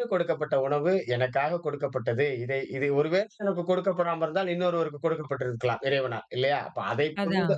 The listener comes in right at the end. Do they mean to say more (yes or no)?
no